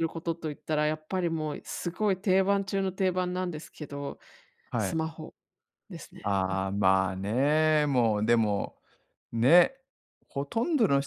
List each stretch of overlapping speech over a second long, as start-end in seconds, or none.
none